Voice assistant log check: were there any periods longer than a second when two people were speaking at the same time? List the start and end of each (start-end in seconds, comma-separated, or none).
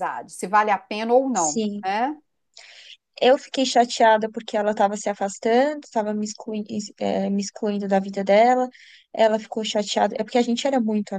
none